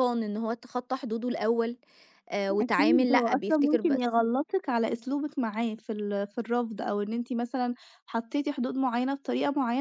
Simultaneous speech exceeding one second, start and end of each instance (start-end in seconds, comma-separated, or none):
2.6-4.2